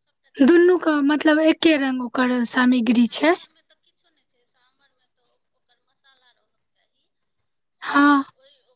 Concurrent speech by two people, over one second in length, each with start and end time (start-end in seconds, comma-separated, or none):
none